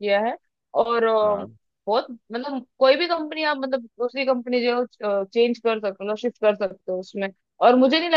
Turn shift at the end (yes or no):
no